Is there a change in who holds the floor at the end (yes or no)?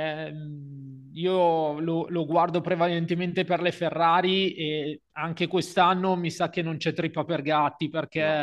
no